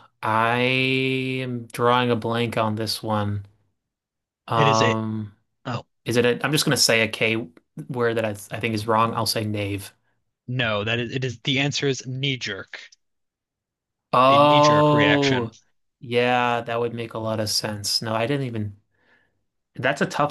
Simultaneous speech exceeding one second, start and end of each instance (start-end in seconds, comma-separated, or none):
14.3-15.5